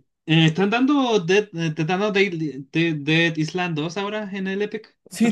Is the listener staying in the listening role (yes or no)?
no